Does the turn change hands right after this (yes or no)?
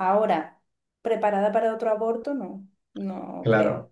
yes